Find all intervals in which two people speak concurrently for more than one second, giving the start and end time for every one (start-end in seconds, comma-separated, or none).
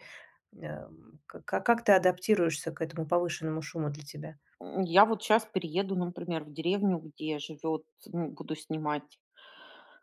none